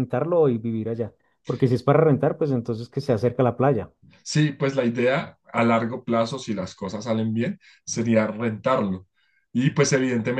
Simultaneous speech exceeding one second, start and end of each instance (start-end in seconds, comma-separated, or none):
none